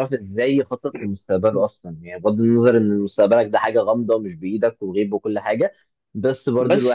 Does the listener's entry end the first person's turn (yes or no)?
yes